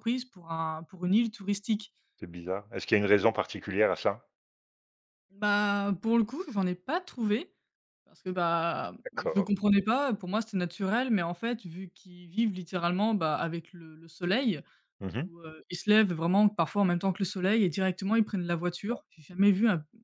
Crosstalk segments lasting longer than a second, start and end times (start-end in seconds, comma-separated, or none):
none